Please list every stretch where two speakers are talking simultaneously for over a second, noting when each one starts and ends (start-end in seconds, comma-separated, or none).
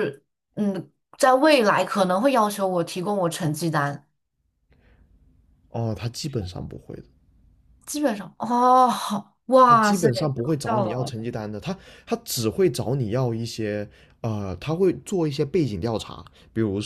9.6-11.1